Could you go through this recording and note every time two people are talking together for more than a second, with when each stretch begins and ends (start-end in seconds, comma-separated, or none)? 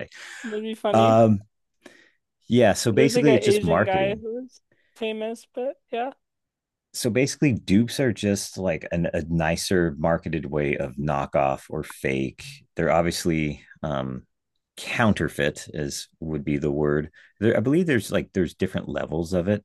2.9-4.2